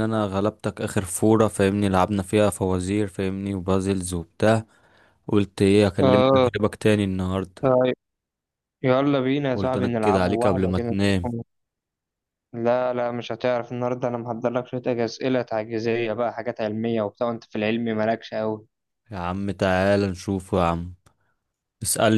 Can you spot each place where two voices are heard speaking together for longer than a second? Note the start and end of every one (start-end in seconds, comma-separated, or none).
9.5-11.3